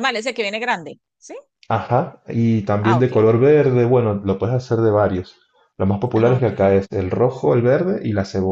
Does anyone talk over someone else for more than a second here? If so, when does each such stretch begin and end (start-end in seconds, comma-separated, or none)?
none